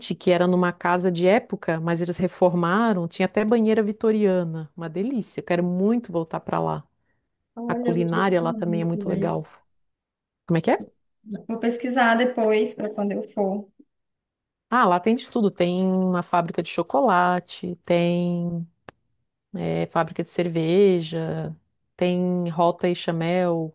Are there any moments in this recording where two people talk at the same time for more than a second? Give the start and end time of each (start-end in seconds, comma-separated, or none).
7.7-9.4